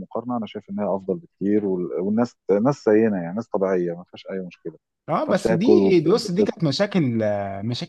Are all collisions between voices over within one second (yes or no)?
no